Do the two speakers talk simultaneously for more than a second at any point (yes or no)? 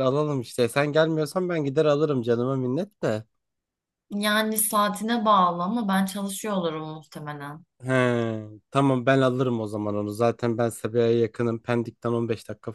no